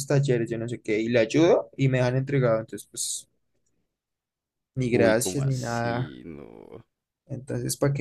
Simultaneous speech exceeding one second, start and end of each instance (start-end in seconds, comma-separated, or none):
4.9-6.1